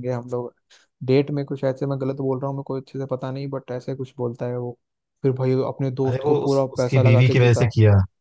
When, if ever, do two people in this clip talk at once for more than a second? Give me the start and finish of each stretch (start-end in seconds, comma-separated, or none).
6.1-7.7